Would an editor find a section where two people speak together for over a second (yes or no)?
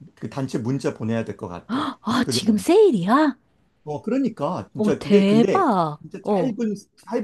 yes